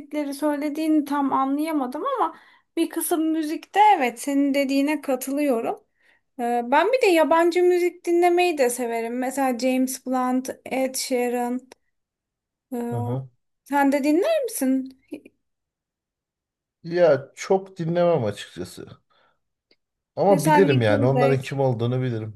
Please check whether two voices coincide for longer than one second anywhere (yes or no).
yes